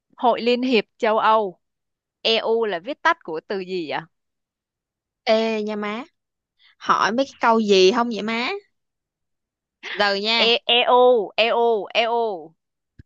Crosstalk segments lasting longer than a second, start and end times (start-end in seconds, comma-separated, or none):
none